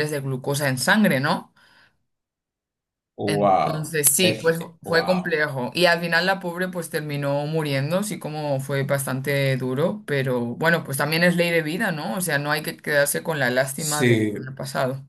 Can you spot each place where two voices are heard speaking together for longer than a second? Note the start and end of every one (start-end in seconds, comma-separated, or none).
3.2-5.3